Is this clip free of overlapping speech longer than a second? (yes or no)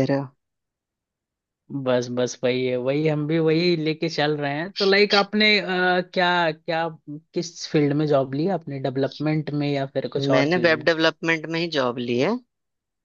yes